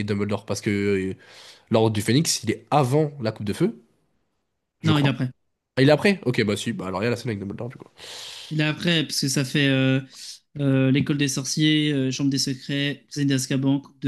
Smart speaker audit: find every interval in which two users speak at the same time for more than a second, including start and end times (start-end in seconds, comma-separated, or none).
none